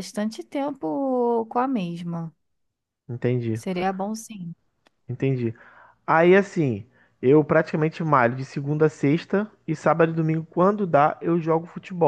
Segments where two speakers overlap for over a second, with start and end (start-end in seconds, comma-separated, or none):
none